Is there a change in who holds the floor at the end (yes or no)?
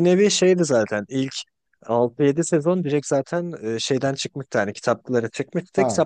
no